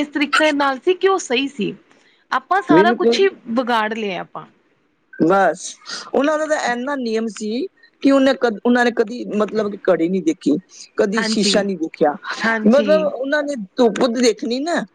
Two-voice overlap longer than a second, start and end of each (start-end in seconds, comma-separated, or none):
none